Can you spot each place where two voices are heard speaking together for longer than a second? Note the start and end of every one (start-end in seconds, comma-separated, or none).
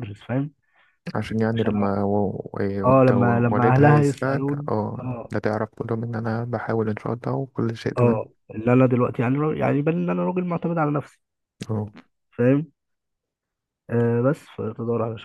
2.9-5.3